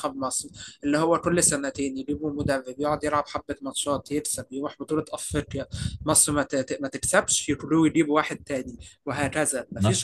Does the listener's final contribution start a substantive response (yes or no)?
no